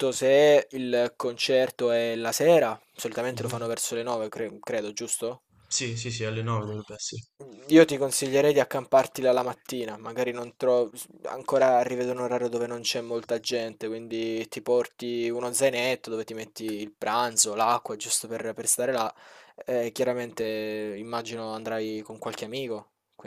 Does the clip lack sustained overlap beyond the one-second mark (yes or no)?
yes